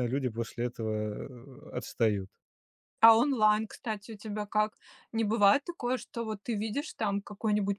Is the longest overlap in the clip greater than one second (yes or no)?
no